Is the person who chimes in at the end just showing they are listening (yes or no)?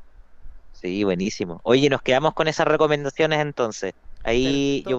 yes